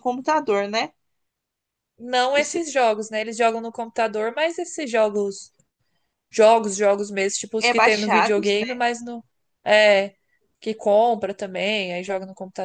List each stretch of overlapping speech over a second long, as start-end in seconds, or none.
7.6-8.8